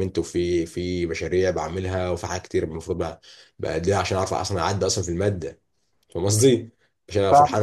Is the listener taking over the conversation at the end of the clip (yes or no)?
no